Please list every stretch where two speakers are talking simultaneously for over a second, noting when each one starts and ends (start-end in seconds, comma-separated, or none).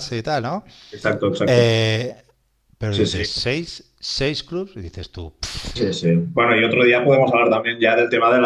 none